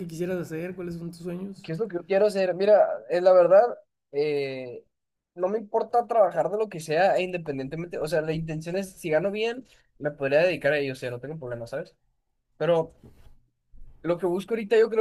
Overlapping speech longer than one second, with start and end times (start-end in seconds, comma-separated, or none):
none